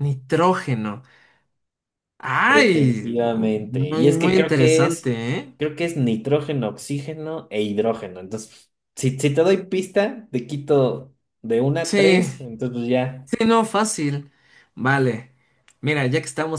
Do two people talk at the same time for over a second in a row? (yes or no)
yes